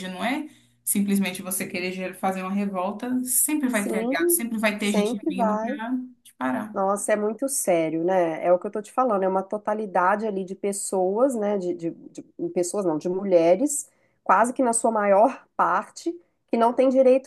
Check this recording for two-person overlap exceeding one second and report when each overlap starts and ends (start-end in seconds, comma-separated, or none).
3.7-5.8